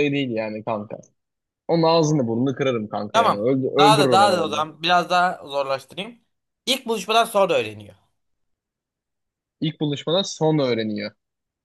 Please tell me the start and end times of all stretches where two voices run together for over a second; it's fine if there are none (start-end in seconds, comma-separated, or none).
3.1-4.7